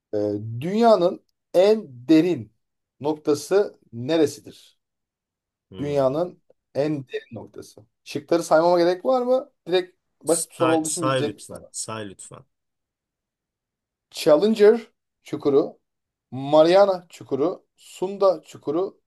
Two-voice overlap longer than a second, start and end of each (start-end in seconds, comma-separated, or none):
10.2-11.7